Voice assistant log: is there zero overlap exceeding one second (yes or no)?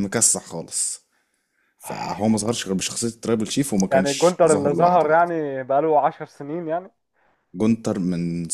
no